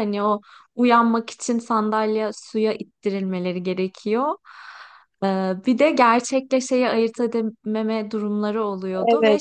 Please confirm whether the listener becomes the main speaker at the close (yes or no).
yes